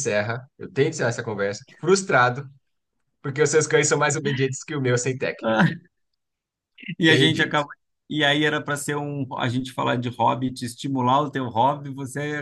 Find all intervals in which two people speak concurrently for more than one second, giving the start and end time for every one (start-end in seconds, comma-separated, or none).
none